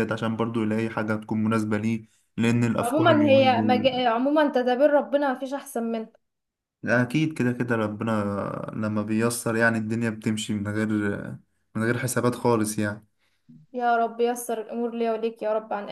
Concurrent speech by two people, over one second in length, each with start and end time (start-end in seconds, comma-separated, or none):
2.8-4.0